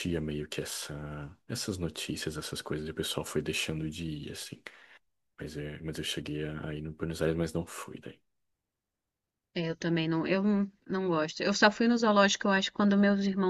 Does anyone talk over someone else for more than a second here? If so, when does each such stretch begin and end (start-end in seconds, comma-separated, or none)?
none